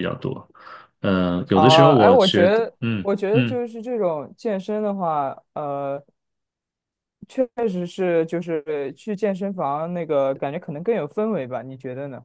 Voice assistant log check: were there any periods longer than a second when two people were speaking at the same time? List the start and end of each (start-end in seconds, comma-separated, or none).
1.5-3.6